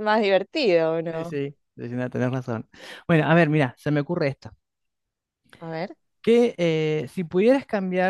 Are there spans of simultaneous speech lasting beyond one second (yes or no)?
no